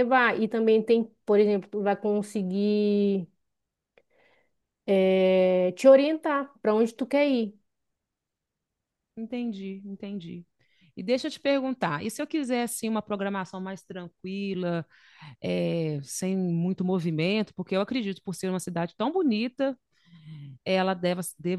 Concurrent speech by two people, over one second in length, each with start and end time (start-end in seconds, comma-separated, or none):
none